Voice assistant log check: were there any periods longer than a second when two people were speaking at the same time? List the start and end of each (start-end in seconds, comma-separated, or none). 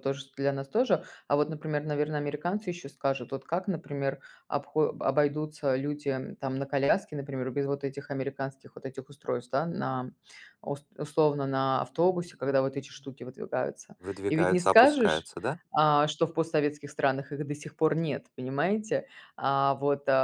14.0-15.3